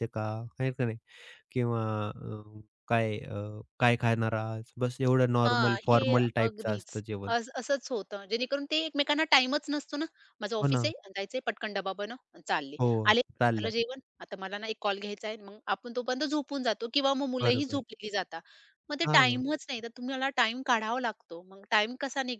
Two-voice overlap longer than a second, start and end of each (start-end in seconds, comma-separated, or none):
5.5-7.3